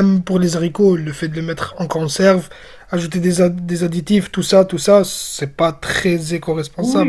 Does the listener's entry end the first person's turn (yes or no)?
yes